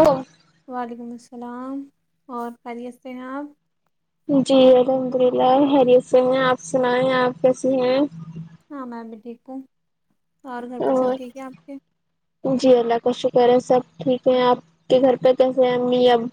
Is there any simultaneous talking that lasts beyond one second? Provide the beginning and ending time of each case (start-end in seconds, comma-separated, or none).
none